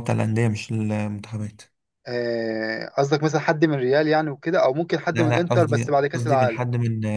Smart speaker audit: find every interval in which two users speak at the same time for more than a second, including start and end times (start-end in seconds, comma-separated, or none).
5.1-6.7